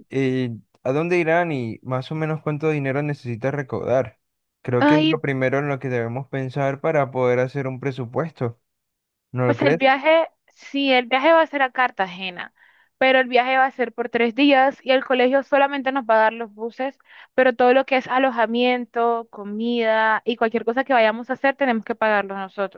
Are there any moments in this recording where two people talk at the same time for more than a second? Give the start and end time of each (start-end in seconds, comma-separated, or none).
none